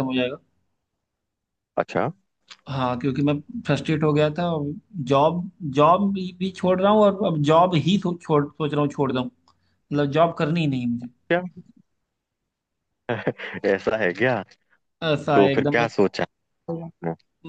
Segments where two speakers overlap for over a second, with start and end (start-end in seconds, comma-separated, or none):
none